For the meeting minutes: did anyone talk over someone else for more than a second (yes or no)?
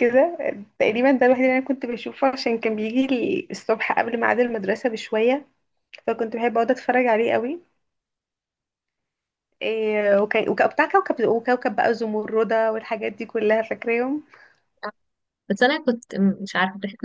no